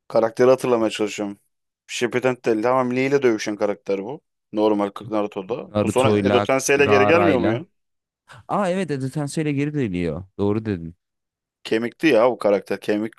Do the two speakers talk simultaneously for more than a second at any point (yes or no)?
yes